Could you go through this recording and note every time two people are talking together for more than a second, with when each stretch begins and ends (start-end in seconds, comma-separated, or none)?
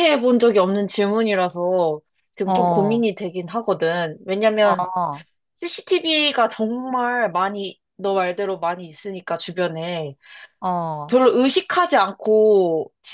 none